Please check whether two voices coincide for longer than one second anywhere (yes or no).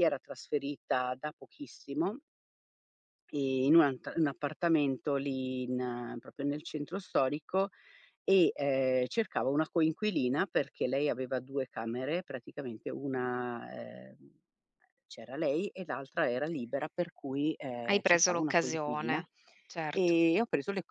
yes